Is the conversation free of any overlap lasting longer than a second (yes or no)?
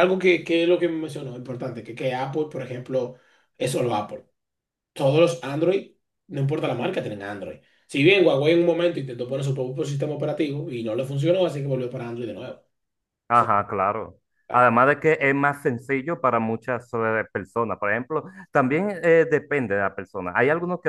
yes